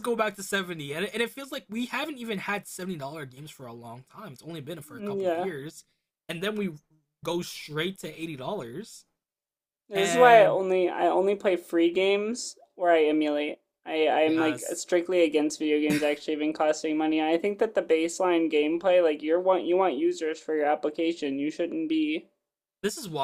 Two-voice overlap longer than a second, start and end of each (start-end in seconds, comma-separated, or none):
none